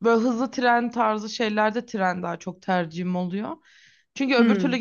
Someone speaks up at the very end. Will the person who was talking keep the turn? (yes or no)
yes